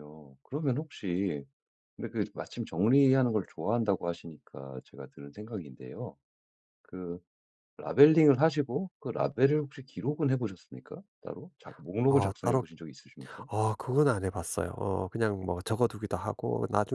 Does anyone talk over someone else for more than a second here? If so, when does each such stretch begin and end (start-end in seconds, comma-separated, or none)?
none